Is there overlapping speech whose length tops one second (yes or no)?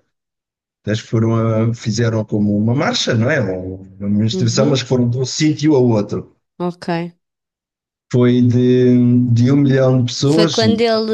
no